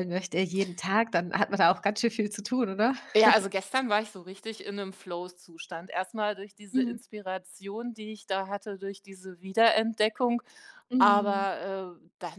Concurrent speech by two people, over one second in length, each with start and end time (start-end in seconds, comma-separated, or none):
none